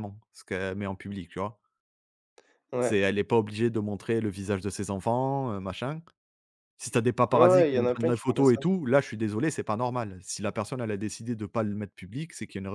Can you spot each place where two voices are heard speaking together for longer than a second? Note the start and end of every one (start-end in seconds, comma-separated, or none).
7.3-8.6